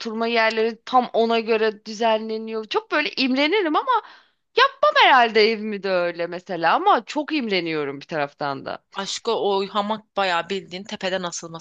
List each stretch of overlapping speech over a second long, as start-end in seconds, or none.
none